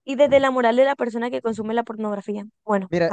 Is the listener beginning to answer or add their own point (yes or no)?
yes